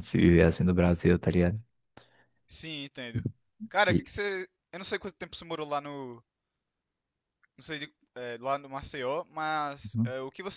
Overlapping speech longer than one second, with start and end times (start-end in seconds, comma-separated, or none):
none